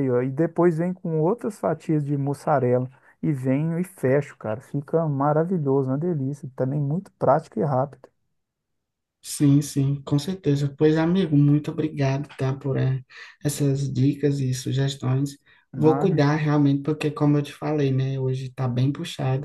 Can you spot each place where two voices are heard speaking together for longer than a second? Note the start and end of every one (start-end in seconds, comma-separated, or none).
none